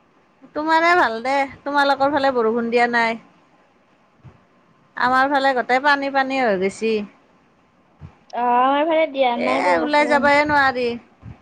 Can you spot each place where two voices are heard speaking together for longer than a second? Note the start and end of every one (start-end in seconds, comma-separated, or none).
8.4-10.2